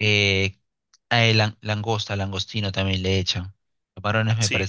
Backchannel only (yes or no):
yes